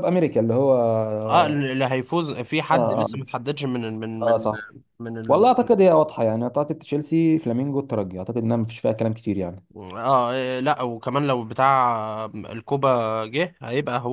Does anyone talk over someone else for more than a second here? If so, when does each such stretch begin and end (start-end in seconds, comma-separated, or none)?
none